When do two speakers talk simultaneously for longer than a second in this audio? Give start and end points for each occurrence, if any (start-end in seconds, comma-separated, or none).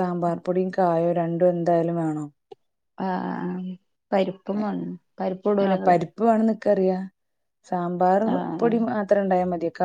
none